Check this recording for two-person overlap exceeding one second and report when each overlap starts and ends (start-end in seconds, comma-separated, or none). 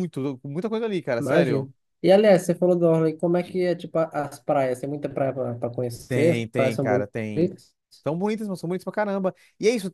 6.1-7.5